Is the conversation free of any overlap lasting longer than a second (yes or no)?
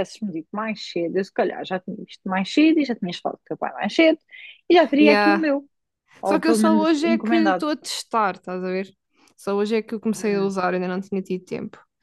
no